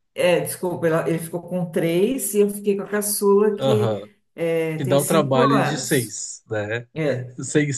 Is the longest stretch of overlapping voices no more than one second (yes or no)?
no